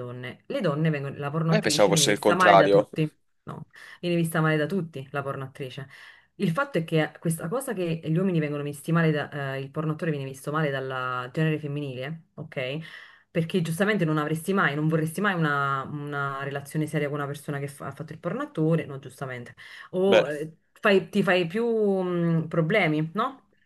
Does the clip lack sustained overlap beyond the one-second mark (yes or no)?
no